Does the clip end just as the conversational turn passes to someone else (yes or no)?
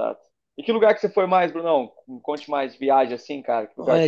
yes